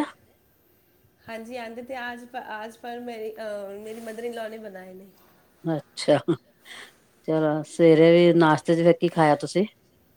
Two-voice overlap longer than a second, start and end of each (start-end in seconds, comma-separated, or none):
none